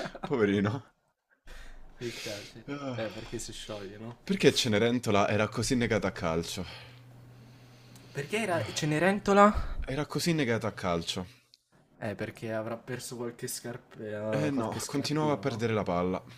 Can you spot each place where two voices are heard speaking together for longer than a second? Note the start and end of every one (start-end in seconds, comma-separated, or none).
14.3-15.6